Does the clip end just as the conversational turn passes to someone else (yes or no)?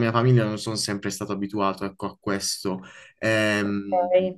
yes